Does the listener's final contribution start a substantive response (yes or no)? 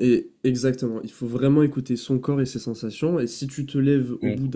no